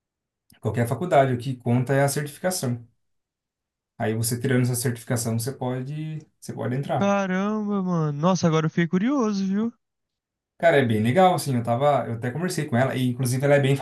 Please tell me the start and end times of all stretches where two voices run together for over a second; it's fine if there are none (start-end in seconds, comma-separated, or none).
none